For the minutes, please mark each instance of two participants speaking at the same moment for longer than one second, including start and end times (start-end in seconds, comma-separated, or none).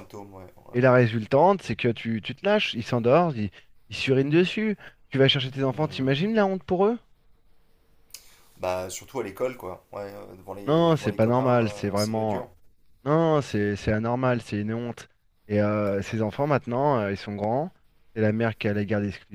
10.7-12.4